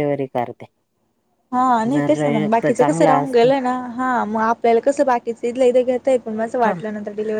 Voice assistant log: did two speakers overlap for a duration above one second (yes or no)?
yes